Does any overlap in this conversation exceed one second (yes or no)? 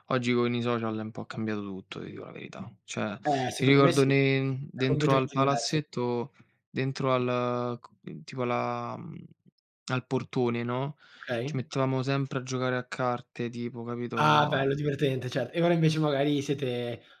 yes